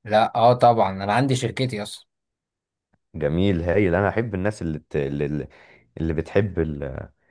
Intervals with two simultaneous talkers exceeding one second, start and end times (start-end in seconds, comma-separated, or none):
none